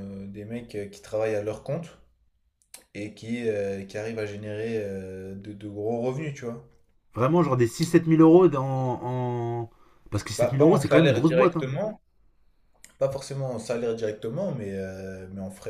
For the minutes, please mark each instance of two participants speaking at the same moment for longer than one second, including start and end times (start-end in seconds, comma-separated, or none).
10.4-11.7